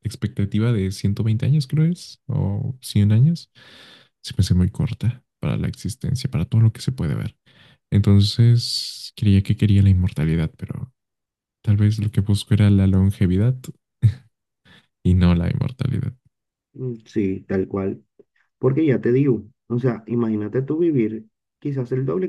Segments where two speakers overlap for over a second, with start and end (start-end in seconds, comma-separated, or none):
none